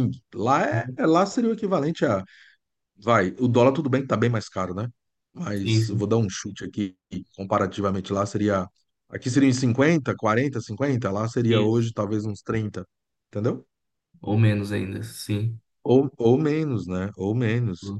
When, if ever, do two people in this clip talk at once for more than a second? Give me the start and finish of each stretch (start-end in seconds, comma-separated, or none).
none